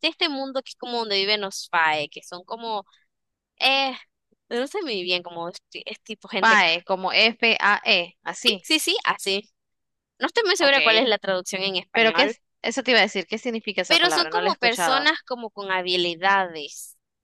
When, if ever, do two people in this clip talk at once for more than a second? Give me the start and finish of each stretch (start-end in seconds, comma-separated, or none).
13.9-15.1